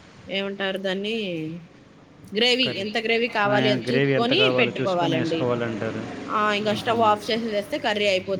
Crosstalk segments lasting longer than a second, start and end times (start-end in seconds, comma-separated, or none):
3.5-5.4